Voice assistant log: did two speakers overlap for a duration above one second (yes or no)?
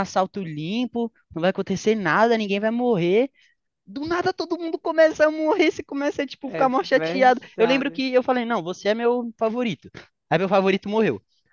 yes